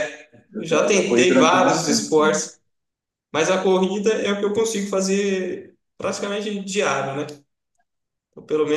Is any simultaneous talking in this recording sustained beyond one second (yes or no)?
yes